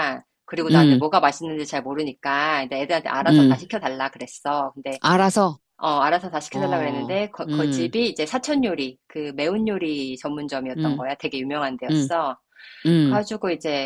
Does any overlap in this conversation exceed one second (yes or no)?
yes